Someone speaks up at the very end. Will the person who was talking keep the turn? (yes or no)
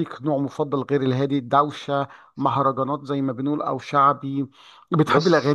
yes